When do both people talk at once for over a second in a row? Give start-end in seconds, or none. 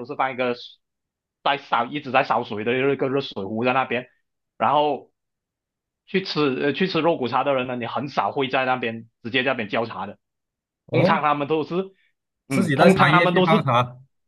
12.5-13.7